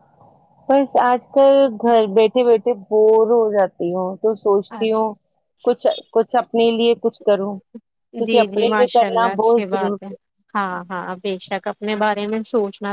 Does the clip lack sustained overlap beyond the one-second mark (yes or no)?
no